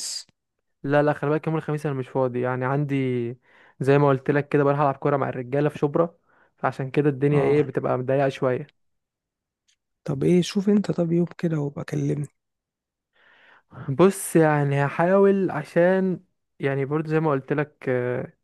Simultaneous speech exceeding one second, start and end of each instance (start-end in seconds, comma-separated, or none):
none